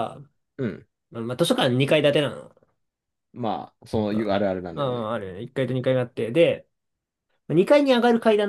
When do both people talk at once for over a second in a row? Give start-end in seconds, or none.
none